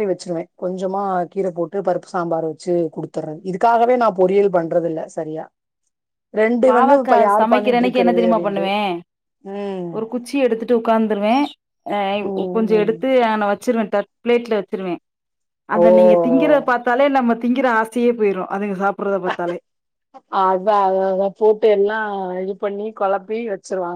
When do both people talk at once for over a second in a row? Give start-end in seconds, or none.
6.7-8.6